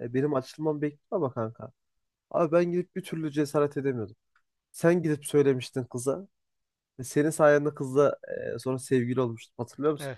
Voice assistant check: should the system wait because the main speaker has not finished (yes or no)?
no